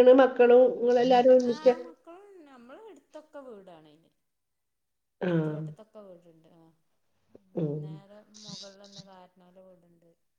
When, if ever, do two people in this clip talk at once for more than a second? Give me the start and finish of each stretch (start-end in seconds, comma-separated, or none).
none